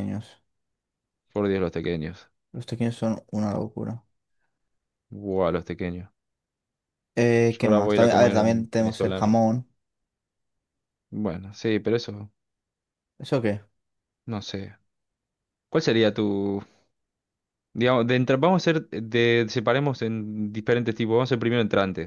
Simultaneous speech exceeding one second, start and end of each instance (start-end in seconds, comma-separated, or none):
7.5-9.4